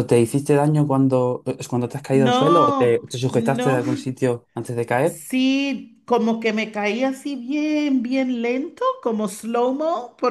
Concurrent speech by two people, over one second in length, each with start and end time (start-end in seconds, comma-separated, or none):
2.1-4.0